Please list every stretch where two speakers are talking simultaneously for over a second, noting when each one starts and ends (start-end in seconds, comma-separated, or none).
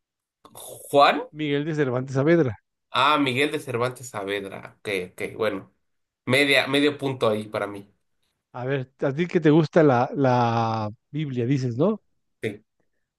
none